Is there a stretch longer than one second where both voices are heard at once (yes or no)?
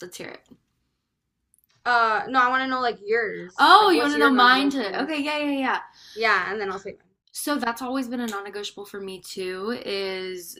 yes